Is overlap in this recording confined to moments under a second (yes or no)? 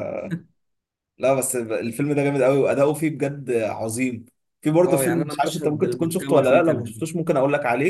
no